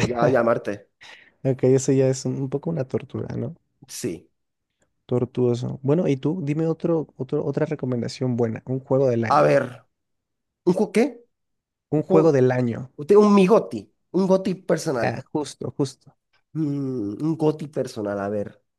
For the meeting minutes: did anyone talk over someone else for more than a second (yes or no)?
no